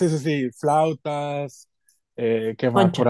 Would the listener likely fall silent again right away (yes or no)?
yes